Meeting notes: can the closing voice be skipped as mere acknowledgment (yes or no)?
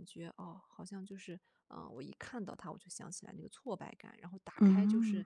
yes